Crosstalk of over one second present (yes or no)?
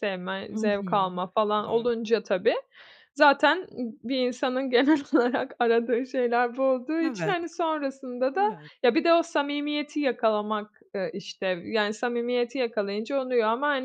yes